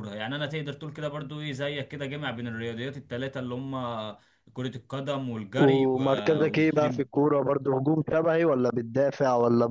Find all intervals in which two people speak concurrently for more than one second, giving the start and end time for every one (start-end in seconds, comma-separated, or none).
5.6-7.1